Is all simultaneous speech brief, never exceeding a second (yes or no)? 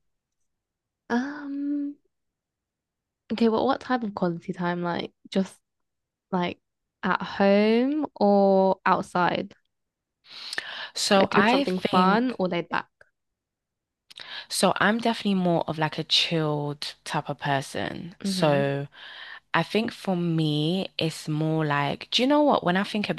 no